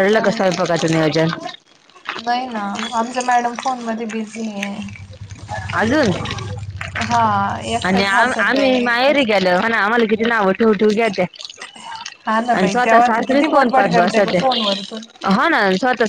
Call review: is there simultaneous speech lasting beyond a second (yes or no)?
yes